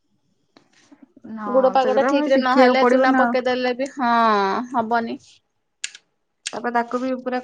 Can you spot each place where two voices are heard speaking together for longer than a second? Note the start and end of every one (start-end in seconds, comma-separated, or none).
1.6-3.4